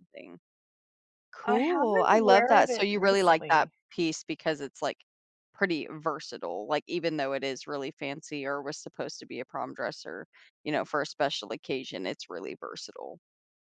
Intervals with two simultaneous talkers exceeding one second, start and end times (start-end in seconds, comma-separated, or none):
1.4-3.7